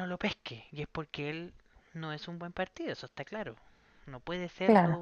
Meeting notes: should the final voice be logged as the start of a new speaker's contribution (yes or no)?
no